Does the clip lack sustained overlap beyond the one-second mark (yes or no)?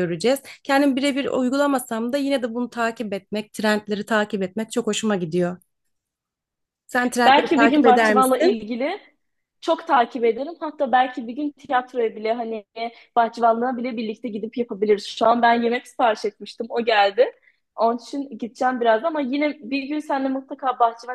no